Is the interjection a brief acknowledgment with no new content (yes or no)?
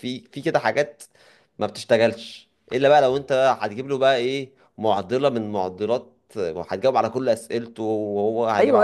no